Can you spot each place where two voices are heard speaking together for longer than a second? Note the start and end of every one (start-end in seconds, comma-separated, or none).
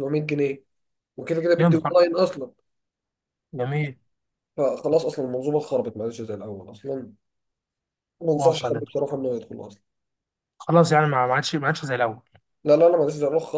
none